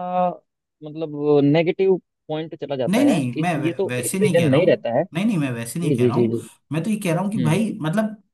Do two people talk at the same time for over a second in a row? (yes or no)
yes